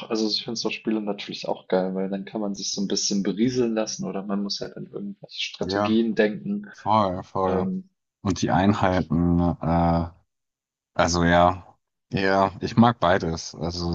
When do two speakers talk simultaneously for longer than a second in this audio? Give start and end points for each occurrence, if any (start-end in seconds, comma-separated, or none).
none